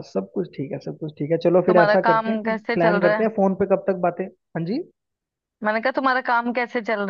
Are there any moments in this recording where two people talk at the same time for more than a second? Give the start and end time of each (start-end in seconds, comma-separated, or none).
1.7-3.3